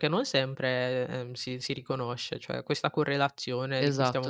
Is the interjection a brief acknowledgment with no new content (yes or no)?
yes